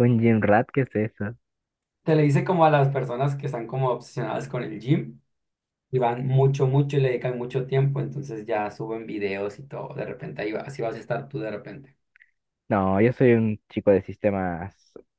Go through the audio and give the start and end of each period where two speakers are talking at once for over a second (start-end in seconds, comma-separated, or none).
none